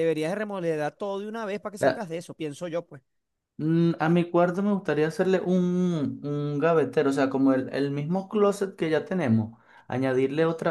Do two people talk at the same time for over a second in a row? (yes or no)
no